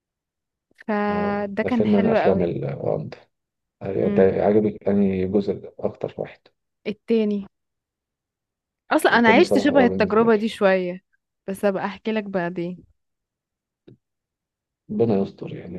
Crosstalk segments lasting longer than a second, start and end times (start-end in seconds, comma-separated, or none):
1.1-2.5, 9.1-10.4